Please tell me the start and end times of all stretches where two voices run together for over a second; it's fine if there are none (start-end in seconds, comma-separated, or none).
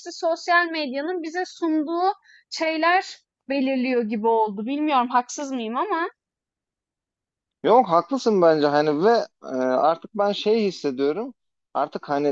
none